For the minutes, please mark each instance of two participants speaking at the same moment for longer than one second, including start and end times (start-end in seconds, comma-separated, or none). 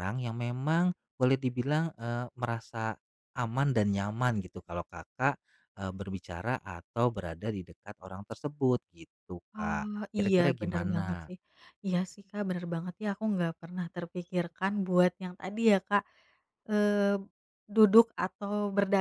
9.5-11.3